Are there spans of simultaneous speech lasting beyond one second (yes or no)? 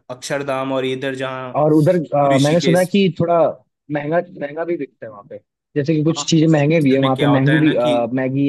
yes